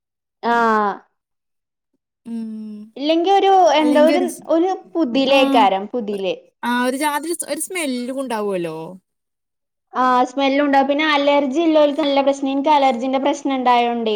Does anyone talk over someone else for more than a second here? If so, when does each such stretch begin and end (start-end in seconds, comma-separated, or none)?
none